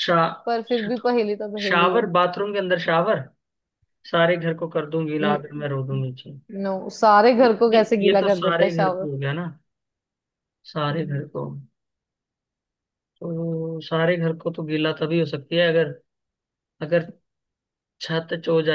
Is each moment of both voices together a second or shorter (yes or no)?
no